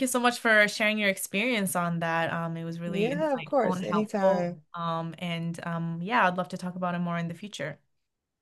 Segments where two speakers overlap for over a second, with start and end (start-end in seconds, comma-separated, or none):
2.9-4.6